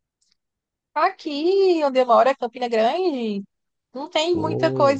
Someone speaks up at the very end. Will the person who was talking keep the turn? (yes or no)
yes